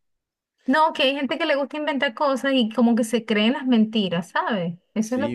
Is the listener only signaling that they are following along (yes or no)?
no